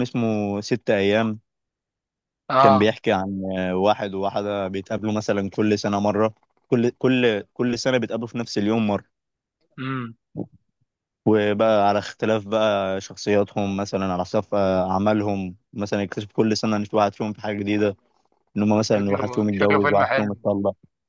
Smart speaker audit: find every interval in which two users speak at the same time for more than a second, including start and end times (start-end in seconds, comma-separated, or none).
19.0-20.4